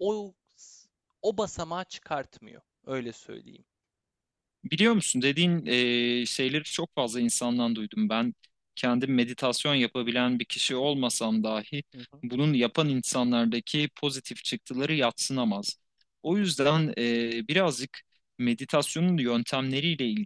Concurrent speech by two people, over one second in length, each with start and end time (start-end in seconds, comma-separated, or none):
none